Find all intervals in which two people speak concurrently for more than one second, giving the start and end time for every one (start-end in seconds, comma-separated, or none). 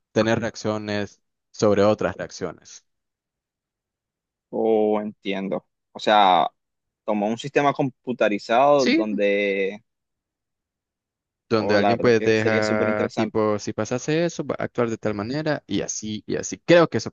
11.5-13.4